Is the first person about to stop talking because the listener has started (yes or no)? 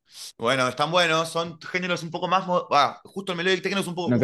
yes